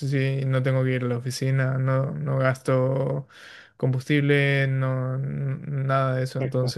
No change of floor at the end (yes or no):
yes